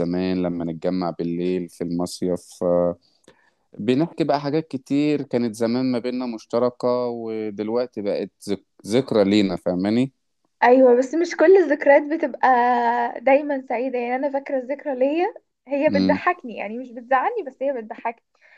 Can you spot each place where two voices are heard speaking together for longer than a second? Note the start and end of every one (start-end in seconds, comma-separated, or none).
none